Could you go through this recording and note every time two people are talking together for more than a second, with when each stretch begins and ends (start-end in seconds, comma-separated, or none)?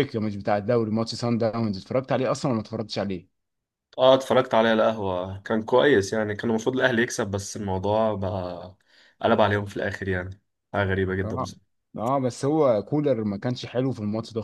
none